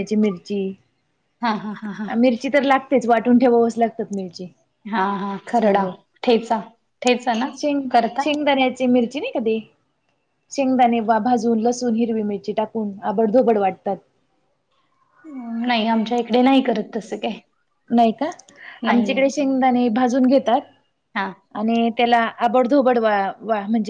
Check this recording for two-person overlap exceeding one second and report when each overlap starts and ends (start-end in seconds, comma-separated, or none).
none